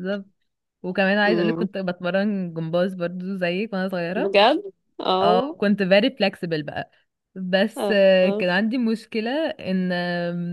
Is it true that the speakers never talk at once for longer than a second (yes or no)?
yes